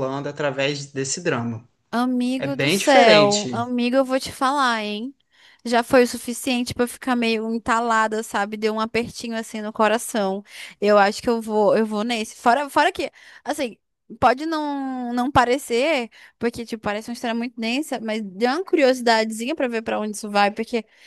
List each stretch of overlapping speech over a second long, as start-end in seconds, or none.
2.4-3.6